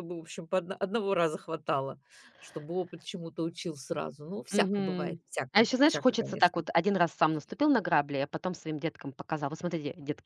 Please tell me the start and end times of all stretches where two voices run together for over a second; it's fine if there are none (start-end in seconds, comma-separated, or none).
4.5-6.7